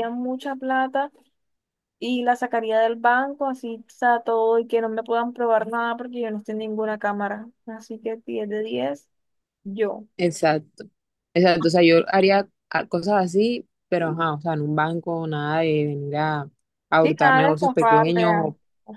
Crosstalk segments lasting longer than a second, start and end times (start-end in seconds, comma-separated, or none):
17.0-18.4